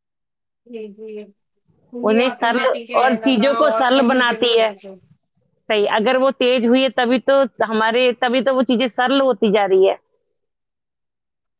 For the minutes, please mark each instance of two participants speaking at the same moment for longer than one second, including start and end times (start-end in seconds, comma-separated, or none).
2.1-4.7